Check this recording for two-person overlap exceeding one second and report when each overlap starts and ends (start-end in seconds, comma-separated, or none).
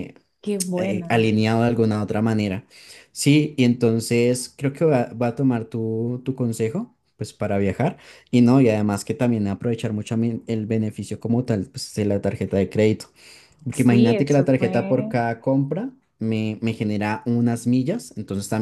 13.7-15.1